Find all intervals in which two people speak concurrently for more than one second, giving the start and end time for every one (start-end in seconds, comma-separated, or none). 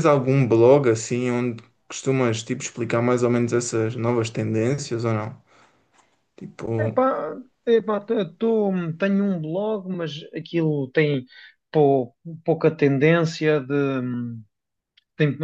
none